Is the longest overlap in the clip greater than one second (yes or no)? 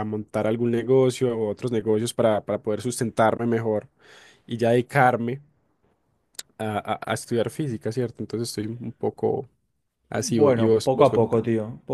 yes